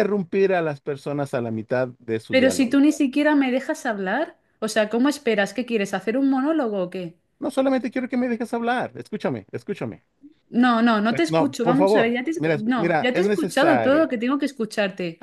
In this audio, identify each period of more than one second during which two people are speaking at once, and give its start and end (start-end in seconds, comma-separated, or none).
11.1-14.1